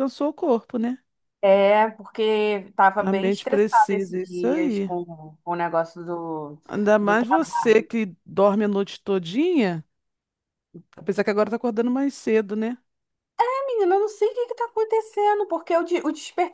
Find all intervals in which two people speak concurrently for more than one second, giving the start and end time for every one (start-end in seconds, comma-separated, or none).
3.0-4.9